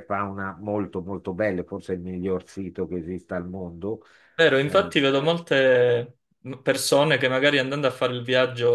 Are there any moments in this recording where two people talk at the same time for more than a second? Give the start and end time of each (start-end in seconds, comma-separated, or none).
none